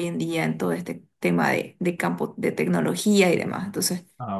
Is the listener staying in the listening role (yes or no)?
yes